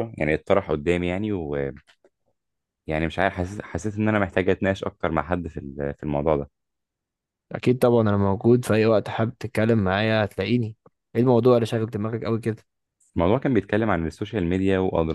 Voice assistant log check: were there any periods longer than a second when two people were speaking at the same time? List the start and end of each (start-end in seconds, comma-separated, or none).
none